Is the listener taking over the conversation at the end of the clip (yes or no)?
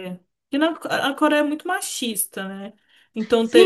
yes